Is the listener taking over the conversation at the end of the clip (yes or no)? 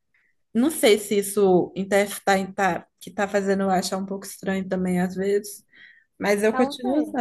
no